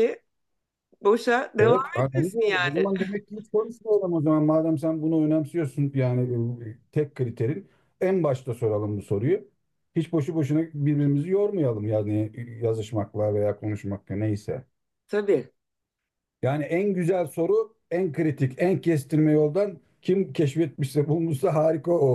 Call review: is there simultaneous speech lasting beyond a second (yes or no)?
yes